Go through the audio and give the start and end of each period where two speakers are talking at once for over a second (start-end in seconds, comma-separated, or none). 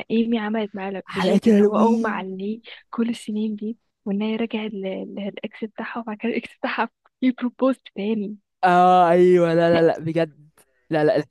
1.0-2.2